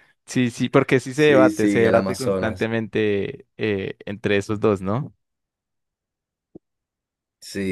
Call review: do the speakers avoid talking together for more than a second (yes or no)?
no